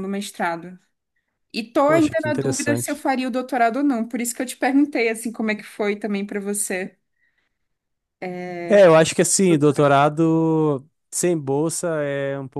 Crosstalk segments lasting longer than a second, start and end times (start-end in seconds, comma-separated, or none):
1.8-3.0